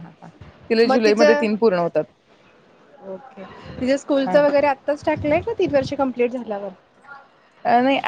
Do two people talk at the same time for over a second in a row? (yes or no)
no